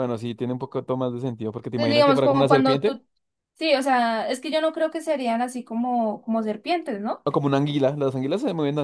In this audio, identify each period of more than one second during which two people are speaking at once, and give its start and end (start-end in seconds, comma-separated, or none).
1.8-3.0